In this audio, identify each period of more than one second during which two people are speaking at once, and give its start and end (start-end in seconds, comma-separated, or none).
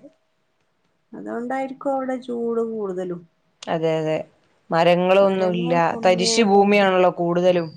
5.2-6.8